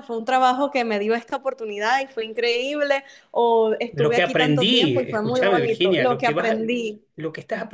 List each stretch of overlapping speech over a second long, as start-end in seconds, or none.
3.9-6.6